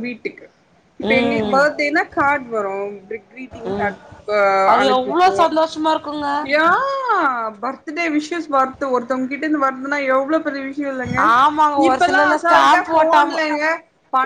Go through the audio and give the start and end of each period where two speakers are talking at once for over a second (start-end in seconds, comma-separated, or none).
11.9-13.4